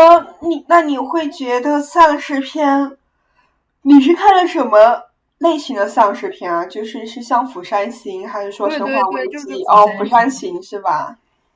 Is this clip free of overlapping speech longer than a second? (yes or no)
no